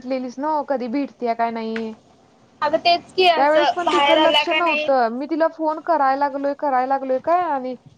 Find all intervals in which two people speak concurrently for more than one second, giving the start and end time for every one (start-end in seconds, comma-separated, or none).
3.4-4.9